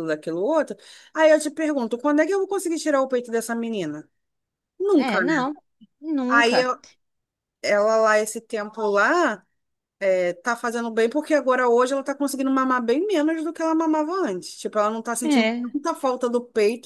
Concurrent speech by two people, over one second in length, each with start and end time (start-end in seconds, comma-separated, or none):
none